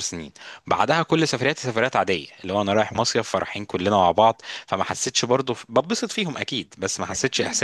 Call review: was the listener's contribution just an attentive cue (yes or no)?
yes